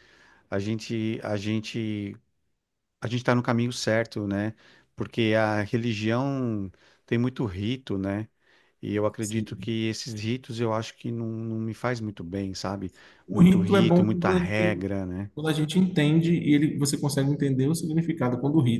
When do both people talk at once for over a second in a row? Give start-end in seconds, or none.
13.3-14.9